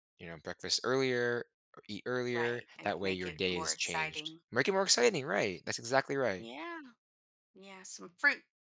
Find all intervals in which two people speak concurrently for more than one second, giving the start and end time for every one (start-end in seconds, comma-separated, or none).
2.3-4.4